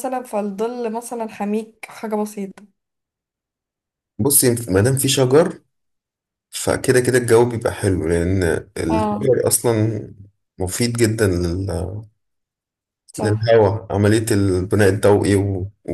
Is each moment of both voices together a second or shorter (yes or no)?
yes